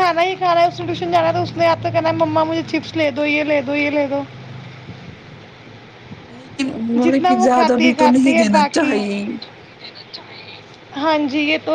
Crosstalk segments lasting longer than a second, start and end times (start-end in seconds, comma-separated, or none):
7.0-9.0